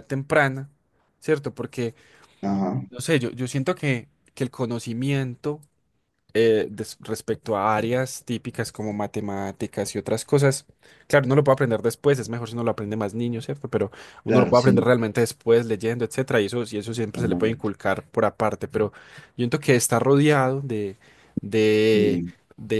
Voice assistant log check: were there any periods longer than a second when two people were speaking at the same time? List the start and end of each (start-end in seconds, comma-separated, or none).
none